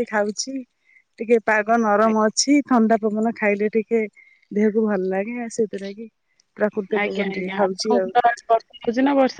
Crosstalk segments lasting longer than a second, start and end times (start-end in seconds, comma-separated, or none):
none